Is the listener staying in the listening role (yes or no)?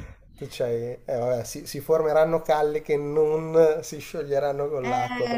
no